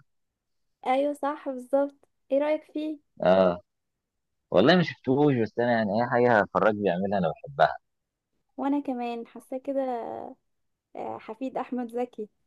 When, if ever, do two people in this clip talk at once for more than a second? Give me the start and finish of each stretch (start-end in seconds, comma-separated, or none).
none